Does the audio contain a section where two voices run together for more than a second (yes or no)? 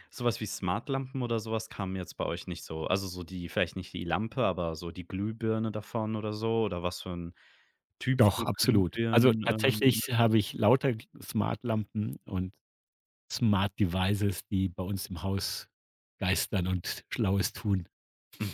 yes